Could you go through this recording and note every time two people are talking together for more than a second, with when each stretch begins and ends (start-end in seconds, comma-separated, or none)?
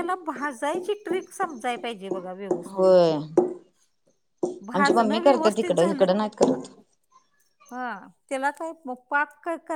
4.7-6.0